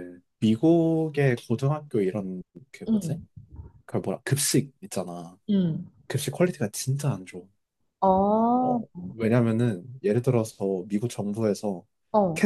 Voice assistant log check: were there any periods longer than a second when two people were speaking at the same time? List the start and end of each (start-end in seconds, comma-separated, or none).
none